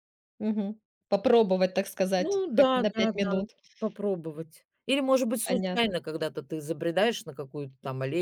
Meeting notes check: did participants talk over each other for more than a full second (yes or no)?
yes